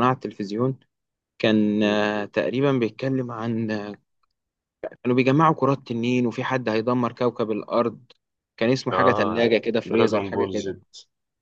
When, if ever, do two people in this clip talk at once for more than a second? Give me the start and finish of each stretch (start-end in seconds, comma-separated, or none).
8.9-10.7